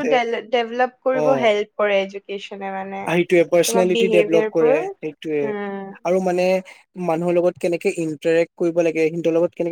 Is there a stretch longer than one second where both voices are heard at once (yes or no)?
yes